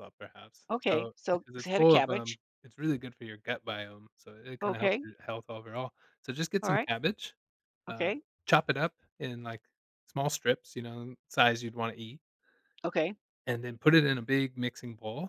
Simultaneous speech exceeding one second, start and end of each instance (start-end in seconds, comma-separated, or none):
0.7-2.4